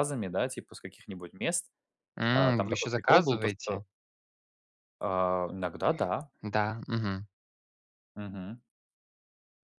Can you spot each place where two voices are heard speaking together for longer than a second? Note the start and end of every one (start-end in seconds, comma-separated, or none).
2.3-3.8